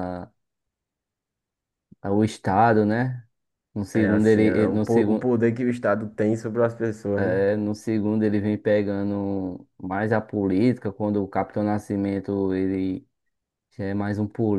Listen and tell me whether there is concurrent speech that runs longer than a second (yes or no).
yes